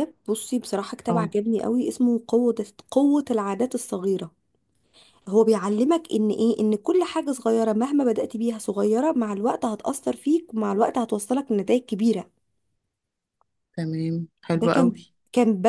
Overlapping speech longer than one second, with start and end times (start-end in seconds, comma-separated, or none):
none